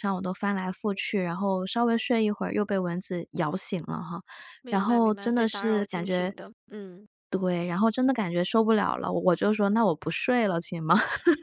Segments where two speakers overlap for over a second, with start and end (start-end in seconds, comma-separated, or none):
4.7-6.3